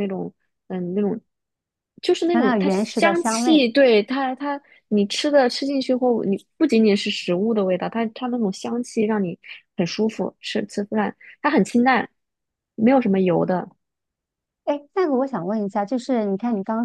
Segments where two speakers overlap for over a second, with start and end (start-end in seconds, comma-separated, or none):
2.3-3.6